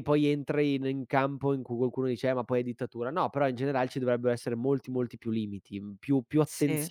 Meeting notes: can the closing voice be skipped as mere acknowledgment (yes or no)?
yes